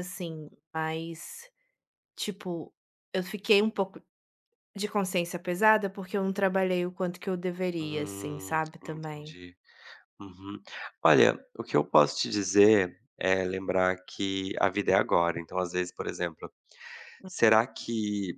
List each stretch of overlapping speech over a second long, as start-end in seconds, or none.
7.8-9.4